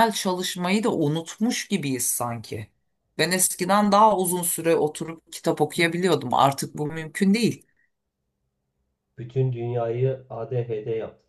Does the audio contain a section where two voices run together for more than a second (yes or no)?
no